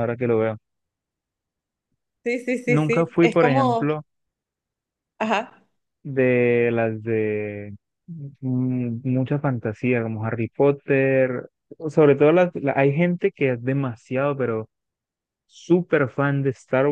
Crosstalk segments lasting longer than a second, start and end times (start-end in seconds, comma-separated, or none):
2.7-3.9